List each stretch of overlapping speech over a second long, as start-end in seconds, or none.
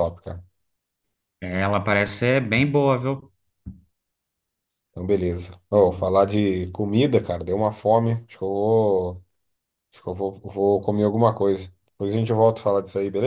none